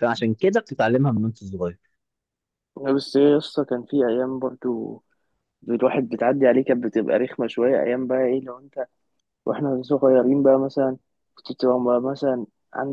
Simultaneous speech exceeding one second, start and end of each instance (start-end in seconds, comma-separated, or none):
none